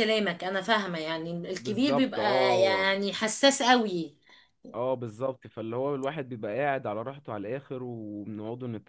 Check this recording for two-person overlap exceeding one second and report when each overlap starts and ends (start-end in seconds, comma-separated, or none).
1.6-2.8